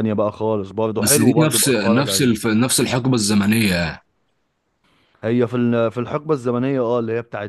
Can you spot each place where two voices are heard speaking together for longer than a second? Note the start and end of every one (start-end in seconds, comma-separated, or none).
1.0-2.3